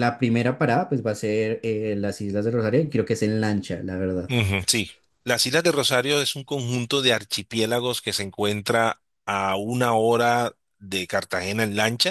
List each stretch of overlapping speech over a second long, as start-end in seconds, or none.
none